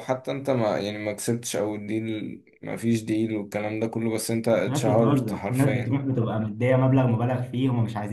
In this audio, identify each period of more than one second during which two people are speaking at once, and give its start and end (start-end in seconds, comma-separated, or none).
4.7-6.0